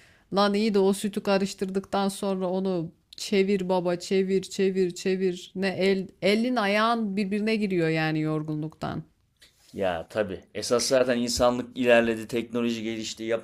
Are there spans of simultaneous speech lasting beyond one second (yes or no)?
no